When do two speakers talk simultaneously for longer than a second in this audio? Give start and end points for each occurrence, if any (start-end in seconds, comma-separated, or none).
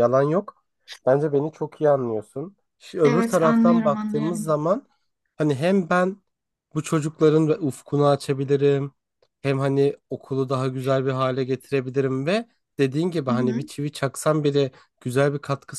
3.0-4.5